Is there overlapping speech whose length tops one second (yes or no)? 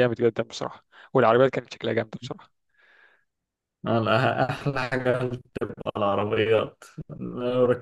no